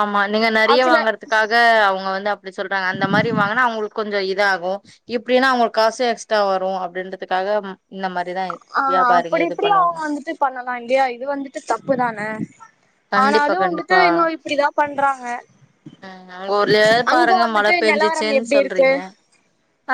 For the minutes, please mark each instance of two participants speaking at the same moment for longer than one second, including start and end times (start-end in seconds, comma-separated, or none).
17.1-18.9